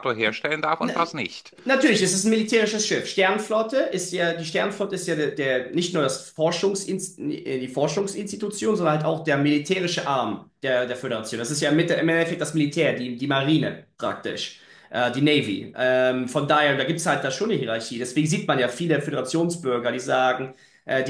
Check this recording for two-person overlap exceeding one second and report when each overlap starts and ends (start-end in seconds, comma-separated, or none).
none